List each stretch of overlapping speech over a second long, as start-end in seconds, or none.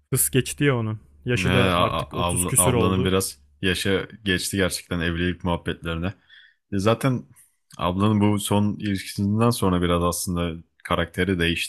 1.3-3.1